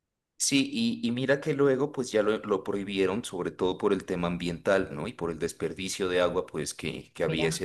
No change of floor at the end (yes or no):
yes